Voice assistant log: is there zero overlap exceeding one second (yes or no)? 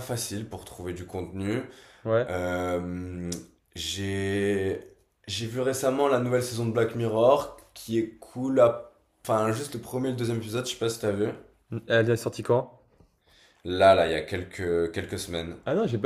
yes